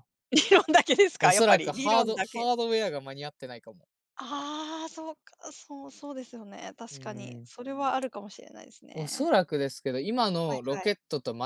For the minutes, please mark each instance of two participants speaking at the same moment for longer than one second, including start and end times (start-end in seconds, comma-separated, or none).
1.2-2.5